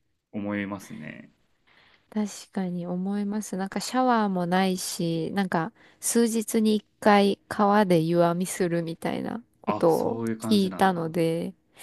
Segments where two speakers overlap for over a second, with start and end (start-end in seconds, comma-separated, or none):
9.7-11.1